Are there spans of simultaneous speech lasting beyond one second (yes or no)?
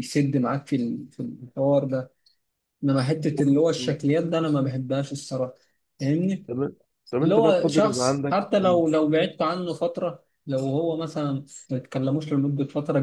yes